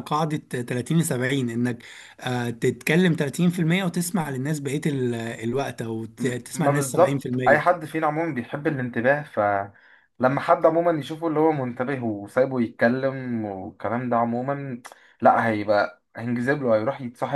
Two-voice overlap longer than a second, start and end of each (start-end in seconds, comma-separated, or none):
6.2-7.7